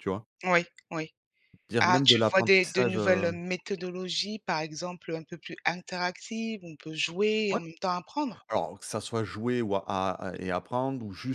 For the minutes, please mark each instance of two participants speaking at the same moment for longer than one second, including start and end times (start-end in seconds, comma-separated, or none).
1.8-3.3